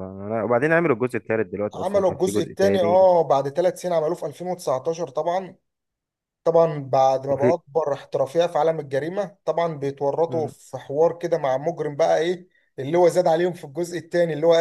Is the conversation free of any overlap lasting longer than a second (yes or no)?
no